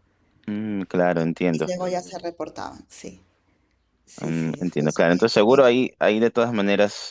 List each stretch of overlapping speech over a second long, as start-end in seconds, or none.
4.2-5.6